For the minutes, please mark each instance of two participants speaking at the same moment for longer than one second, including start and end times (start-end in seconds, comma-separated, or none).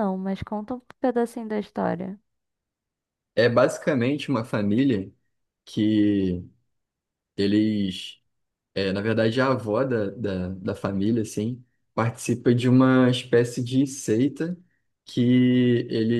none